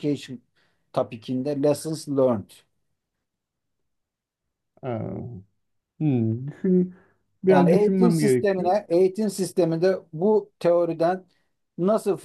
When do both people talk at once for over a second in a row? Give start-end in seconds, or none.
7.5-8.7